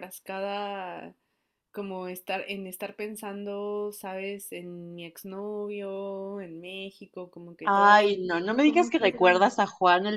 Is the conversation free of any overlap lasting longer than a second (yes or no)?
no